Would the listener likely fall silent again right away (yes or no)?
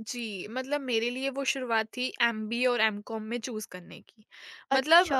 yes